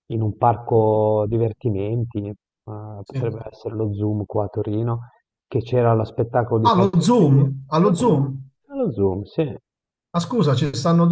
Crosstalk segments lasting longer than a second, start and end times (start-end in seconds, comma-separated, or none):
6.7-8.5